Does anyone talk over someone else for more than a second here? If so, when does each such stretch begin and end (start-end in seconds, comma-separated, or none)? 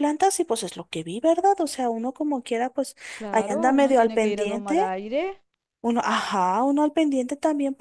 3.3-4.8